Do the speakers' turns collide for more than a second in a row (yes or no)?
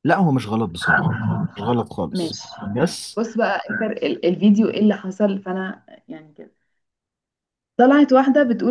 no